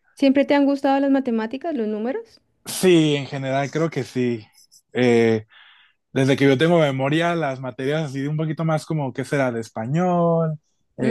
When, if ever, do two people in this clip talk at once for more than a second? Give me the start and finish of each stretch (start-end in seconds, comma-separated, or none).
none